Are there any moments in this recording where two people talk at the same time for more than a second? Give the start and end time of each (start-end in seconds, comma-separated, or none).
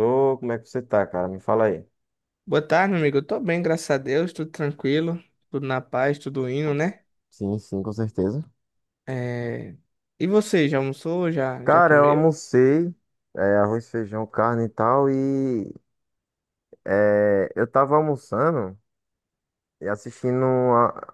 none